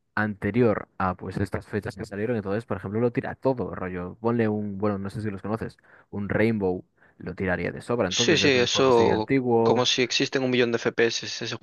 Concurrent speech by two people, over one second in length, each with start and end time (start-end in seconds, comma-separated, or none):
8.1-9.9